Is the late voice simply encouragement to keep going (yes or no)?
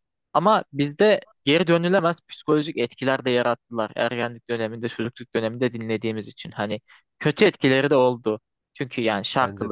yes